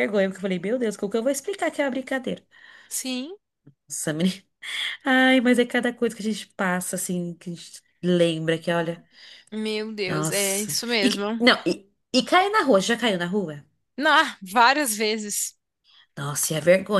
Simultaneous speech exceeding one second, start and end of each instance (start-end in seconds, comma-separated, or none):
10.1-11.4